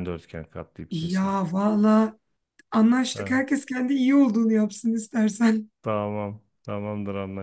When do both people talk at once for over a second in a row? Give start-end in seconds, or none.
none